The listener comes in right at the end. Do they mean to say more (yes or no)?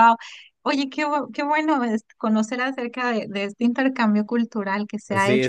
yes